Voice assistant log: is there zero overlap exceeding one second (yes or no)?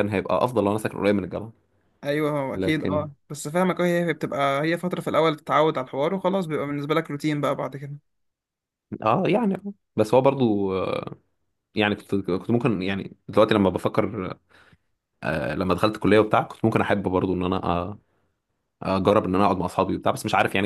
yes